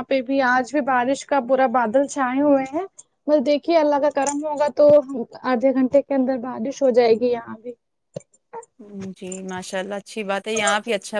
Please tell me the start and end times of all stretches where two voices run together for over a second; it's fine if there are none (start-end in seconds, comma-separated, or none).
none